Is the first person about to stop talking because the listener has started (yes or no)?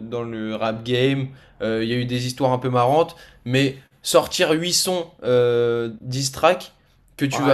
yes